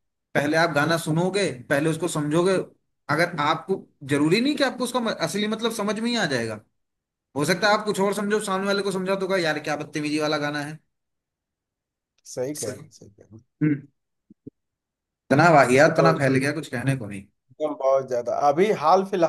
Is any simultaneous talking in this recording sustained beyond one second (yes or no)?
no